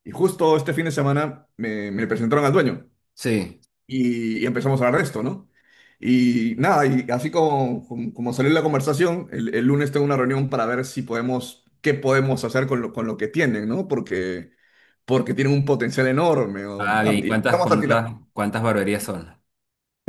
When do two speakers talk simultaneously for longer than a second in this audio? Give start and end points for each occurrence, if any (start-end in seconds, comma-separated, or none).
16.8-18.1